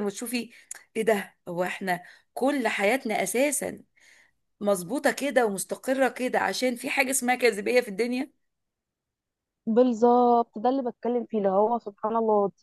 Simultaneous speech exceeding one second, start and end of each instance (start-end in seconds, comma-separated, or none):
none